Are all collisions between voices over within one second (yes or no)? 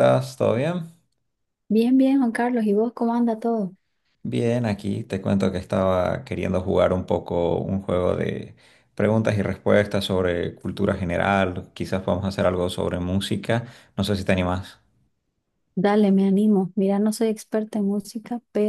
yes